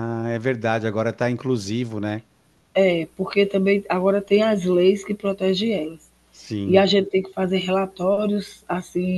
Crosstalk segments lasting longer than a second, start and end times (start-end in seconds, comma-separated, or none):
none